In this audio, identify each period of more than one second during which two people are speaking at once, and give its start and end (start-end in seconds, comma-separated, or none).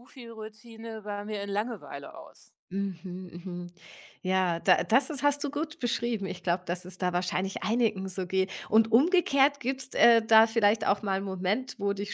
none